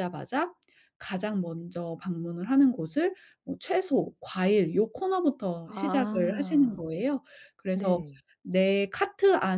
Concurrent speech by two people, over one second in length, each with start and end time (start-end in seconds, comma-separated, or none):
5.7-6.9